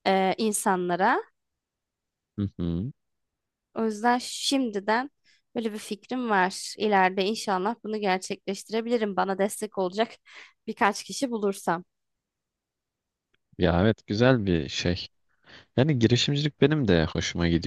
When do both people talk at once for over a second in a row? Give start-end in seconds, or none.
none